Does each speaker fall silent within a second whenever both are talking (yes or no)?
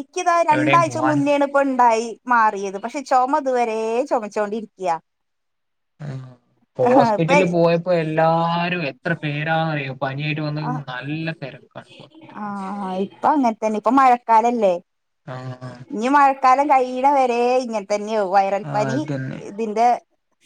yes